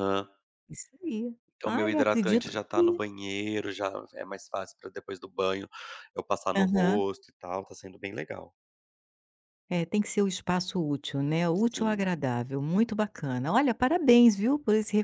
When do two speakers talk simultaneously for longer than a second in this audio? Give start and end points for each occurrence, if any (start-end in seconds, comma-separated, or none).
1.6-3.0